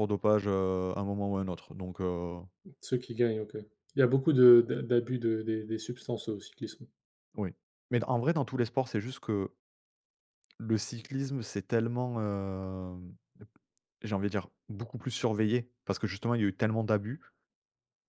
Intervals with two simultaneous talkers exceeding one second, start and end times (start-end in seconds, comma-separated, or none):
none